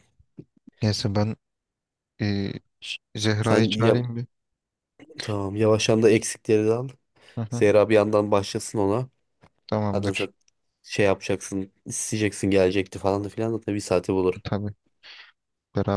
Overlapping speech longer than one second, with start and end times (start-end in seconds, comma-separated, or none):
none